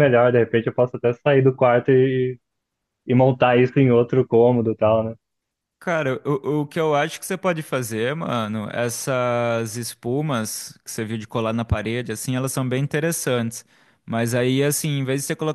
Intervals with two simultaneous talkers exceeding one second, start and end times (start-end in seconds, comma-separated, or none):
none